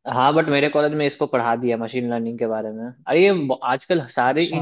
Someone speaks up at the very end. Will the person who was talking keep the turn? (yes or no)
yes